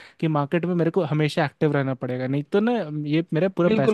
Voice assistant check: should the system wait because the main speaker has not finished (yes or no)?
no